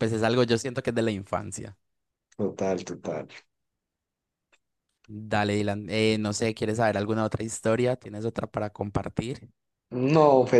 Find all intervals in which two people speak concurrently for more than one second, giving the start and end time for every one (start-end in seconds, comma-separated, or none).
none